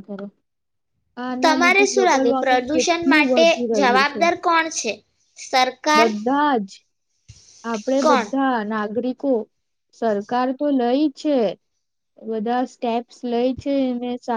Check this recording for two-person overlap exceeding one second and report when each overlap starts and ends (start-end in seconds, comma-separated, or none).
1.5-4.2